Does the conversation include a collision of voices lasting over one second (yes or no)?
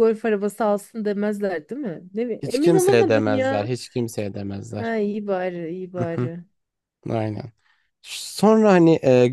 yes